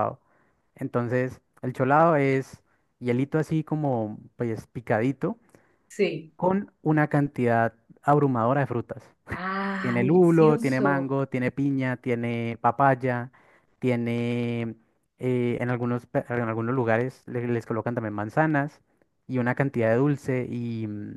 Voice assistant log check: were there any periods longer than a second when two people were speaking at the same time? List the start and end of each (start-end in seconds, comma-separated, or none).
9.8-11.2